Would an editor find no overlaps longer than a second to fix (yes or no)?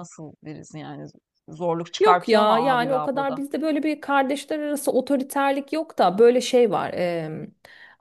no